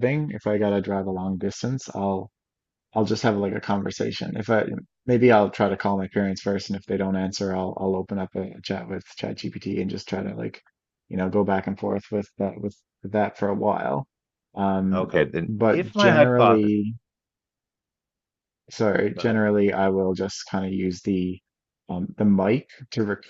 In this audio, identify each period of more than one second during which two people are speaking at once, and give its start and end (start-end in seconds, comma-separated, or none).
14.9-16.7